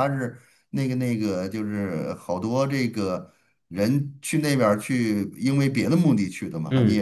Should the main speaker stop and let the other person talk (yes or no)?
yes